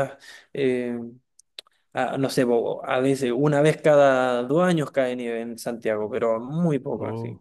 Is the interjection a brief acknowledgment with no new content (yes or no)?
yes